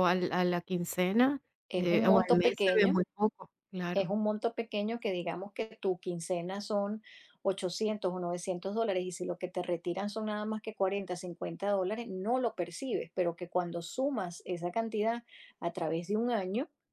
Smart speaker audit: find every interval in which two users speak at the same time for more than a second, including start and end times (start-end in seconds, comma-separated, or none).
1.7-3.0